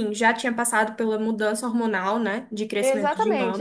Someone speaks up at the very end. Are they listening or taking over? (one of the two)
taking over